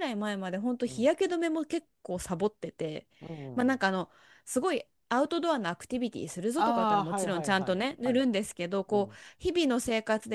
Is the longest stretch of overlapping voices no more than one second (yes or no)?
no